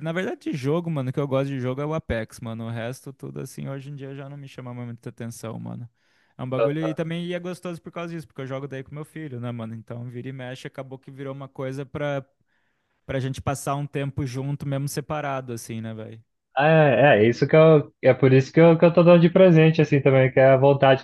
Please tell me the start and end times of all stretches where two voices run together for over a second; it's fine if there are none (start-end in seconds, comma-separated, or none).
none